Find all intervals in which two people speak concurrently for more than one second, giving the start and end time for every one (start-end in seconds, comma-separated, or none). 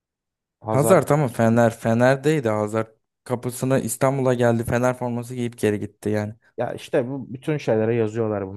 none